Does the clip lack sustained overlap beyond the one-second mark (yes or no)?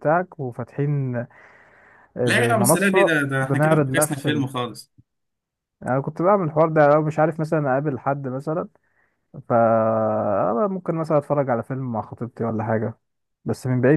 no